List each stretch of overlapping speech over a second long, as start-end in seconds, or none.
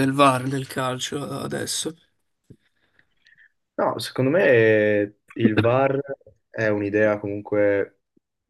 none